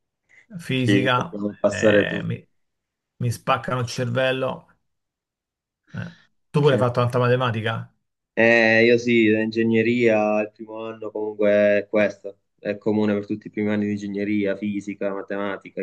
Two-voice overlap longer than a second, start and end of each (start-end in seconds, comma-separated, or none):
0.8-2.4